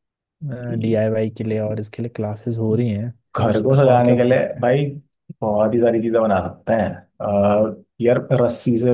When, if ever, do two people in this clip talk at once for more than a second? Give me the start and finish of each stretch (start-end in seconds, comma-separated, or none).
3.4-4.7